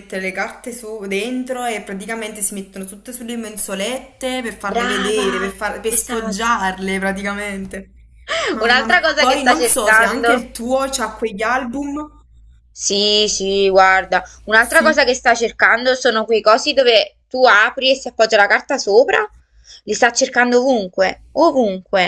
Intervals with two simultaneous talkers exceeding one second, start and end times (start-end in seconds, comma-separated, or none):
4.7-6.6, 8.6-10.5